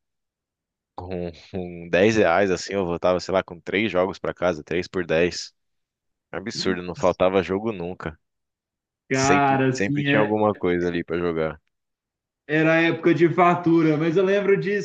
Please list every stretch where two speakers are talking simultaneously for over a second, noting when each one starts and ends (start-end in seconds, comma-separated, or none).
9.1-10.3